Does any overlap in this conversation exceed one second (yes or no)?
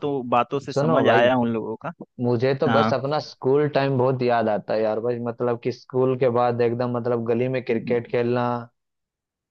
no